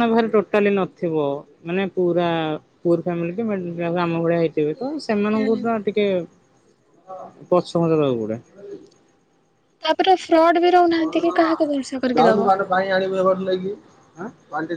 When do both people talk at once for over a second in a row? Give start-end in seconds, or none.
10.9-12.6